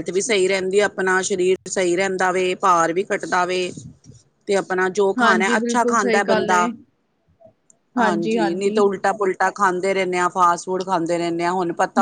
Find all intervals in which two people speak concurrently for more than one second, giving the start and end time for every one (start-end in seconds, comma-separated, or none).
5.2-6.7